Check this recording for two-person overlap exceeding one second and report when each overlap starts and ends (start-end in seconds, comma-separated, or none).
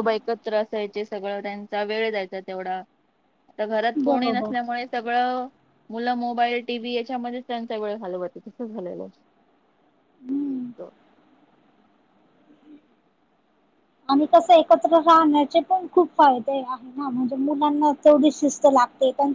none